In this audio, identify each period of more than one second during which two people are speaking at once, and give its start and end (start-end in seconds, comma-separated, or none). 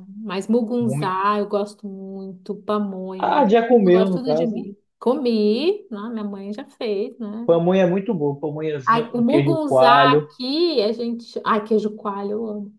3.2-4.7, 8.9-10.3